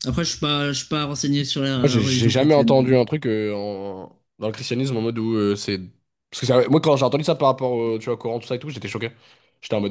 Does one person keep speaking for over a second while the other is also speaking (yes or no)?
yes